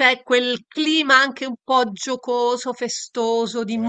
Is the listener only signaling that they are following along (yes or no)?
yes